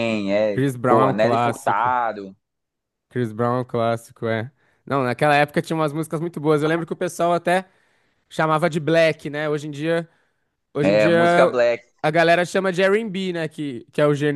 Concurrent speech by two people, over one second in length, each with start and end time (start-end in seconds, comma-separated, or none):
0.5-1.9